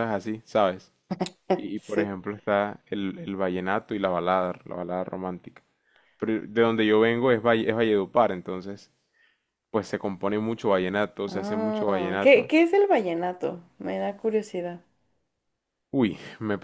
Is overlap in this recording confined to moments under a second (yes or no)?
no